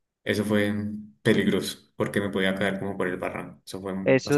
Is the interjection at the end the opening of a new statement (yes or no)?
yes